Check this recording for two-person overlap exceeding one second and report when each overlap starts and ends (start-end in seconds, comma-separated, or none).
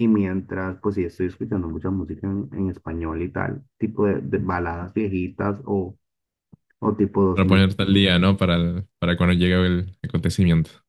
none